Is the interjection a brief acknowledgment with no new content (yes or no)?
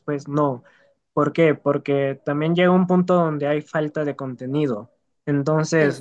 yes